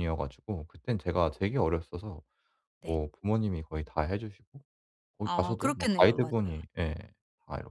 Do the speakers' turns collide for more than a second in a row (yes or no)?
yes